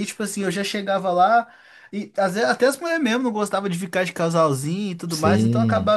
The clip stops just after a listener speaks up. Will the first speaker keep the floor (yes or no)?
yes